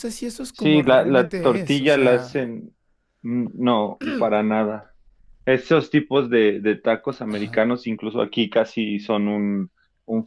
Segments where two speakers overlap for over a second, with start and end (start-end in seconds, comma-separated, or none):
0.5-2.5